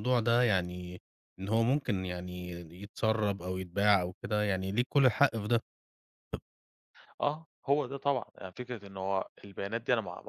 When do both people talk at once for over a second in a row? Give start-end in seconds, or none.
none